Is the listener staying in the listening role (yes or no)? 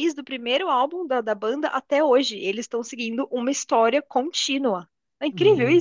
no